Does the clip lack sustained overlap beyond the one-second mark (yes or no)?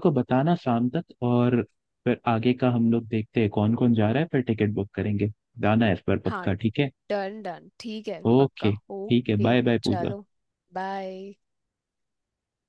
no